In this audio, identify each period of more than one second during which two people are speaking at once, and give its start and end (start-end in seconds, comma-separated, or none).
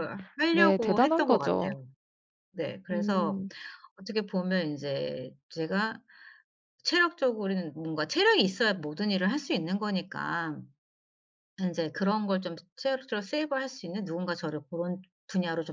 0.5-1.7